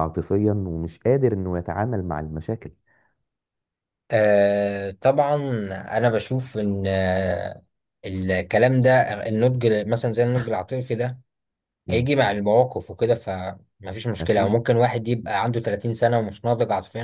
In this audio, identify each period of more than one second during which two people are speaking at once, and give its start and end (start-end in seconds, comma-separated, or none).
none